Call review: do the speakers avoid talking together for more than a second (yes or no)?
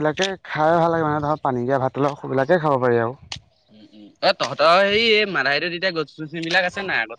yes